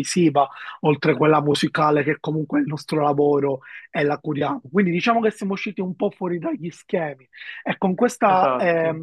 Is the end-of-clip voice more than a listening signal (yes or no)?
no